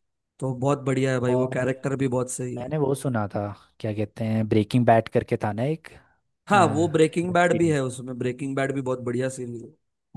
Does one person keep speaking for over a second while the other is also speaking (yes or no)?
yes